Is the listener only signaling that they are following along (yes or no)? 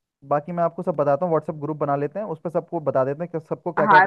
no